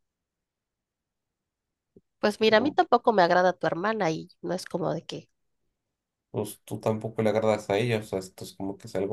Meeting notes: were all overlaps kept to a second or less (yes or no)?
yes